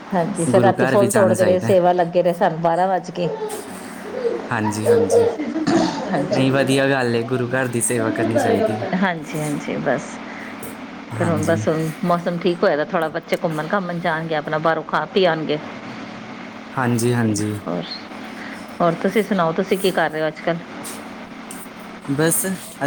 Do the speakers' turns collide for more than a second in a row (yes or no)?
yes